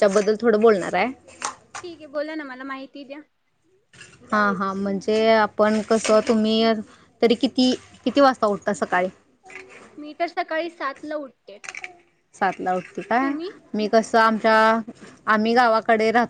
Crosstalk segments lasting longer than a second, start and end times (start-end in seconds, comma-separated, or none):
none